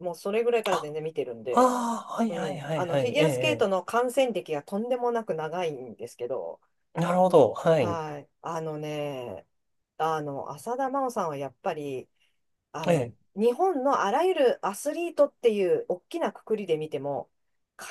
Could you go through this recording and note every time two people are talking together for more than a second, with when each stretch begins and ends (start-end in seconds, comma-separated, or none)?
2.3-3.7